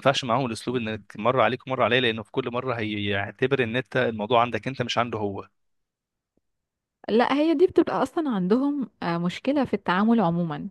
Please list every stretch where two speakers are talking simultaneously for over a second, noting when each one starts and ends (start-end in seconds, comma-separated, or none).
none